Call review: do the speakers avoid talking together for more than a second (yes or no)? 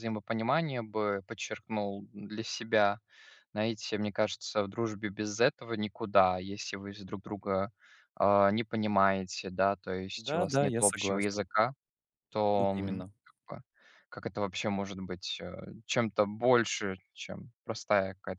no